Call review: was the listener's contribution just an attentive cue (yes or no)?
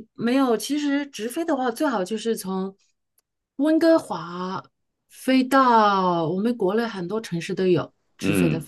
no